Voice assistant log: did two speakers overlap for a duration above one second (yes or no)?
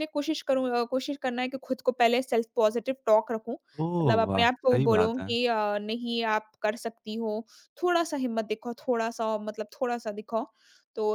yes